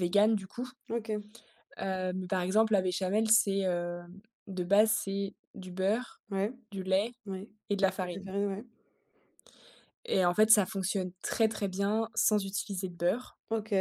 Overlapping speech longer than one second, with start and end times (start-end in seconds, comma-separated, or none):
none